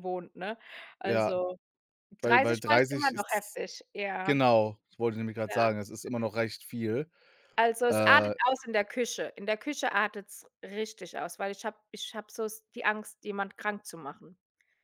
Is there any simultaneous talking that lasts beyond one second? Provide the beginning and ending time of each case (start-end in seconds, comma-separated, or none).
2.2-3.6